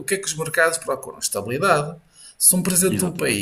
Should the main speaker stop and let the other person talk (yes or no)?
no